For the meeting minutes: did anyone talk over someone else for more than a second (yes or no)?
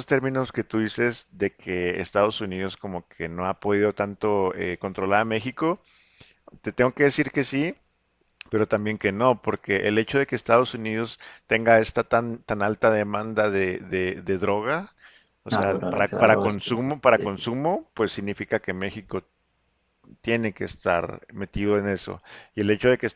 yes